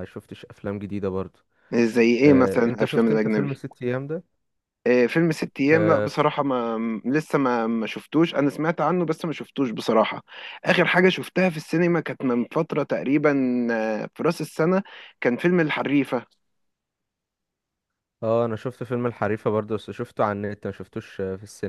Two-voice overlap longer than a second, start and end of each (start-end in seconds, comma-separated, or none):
2.3-3.6